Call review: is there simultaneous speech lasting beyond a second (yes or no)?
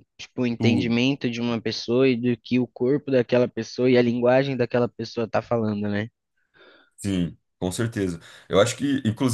no